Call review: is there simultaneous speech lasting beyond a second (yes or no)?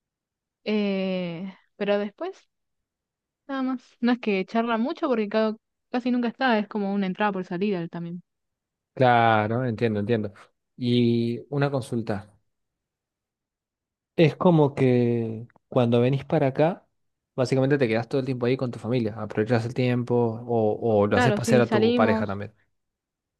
yes